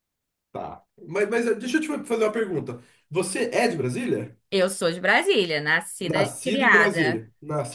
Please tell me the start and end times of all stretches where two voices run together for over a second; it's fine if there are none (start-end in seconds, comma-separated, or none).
6.0-7.2